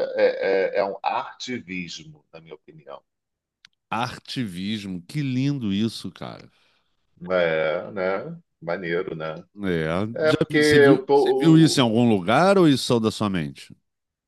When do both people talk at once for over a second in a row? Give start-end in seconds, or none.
10.2-11.8